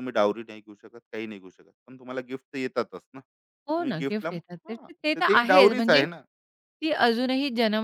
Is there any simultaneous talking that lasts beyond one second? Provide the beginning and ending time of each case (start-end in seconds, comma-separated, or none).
3.7-6.0